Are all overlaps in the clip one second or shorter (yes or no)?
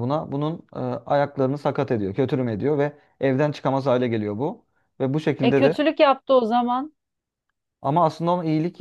yes